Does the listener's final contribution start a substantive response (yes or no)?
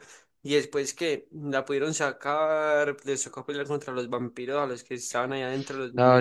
yes